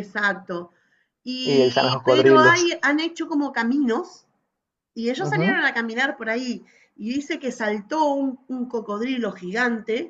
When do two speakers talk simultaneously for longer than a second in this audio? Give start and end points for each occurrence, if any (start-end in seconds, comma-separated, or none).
1.4-2.7